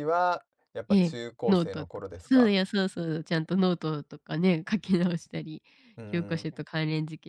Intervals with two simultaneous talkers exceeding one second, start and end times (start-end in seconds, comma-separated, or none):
0.9-2.6